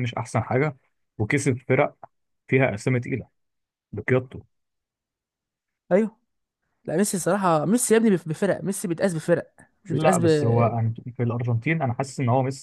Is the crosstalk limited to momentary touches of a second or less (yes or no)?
yes